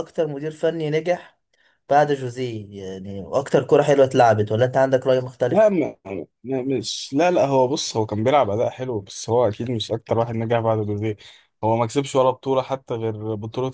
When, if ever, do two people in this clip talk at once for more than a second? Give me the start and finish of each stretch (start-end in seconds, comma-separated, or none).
none